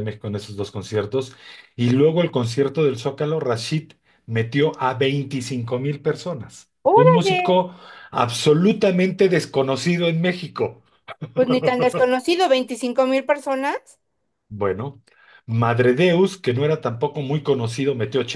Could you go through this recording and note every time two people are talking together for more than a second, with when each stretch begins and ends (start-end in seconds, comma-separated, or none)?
none